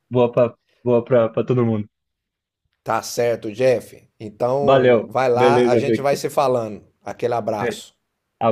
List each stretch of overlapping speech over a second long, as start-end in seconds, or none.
4.6-6.2